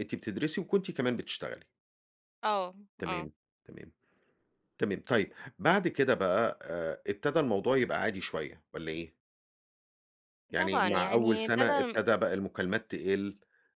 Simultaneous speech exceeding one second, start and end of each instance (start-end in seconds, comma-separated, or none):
10.6-12.0